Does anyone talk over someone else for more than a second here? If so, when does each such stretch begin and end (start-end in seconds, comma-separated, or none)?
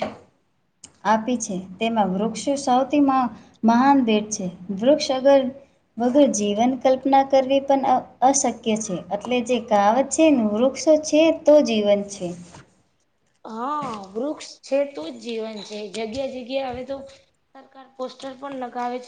none